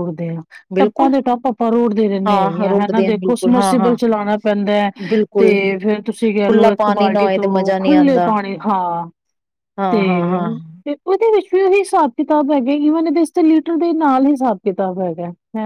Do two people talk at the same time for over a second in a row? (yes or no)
yes